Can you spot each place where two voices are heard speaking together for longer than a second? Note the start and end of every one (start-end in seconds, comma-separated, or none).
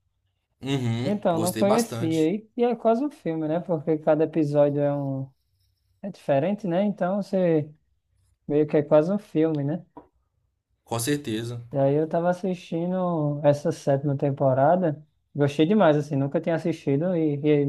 1.0-2.3